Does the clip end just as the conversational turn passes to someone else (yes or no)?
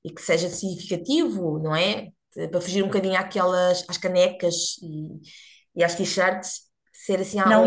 yes